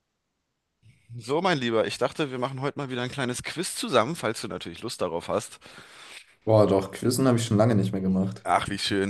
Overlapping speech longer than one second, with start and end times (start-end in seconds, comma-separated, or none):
none